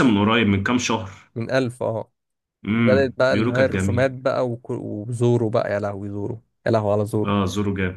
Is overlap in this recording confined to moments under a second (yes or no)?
no